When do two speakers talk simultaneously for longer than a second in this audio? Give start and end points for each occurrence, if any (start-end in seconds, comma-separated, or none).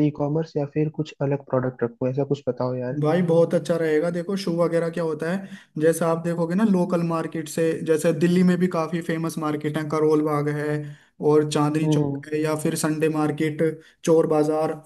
none